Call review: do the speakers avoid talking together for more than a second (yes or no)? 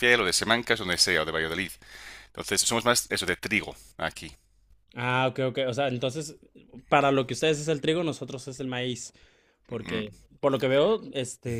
yes